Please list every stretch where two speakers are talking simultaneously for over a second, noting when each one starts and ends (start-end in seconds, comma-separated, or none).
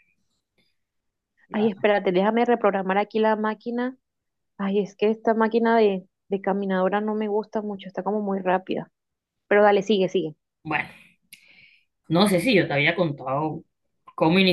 none